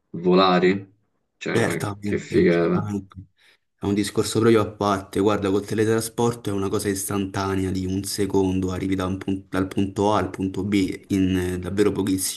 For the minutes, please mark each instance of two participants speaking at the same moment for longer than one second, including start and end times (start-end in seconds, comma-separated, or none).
1.5-2.9